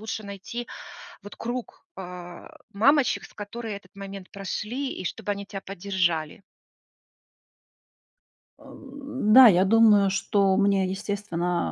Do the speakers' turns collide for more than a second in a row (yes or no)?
no